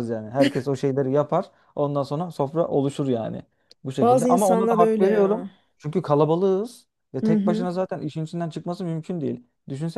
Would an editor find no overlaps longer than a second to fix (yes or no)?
no